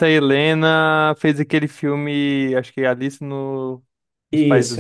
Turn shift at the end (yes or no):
yes